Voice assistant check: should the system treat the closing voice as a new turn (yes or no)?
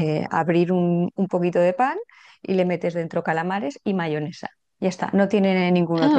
yes